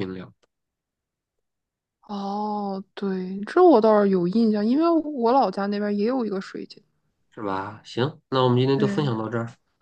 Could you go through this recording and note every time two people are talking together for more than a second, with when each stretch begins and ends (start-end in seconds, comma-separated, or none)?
none